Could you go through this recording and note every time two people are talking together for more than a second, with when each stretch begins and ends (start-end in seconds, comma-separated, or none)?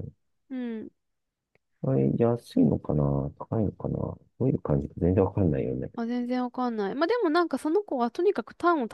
none